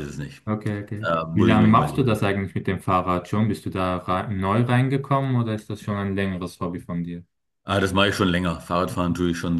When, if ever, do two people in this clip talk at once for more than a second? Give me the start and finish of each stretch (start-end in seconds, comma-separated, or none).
1.0-2.3